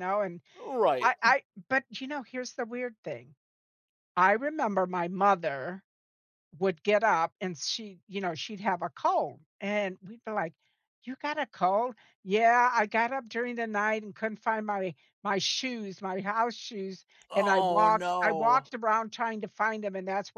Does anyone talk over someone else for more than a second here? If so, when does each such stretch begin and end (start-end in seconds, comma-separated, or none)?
17.3-18.7